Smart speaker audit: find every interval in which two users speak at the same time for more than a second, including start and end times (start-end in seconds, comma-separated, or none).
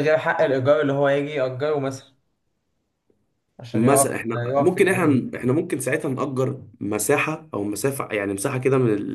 3.7-5.2